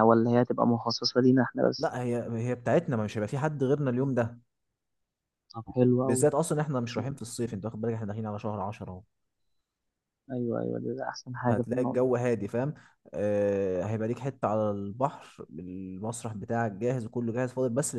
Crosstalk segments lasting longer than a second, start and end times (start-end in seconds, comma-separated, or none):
none